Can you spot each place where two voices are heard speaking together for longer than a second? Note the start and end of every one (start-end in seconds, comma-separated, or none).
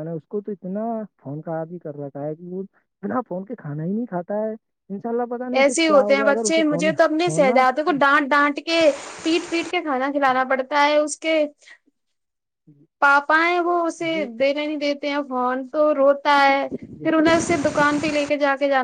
none